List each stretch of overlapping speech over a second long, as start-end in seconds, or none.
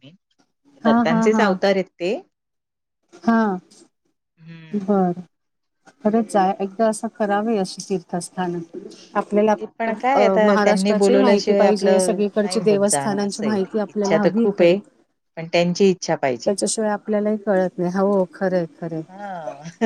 10.1-14.8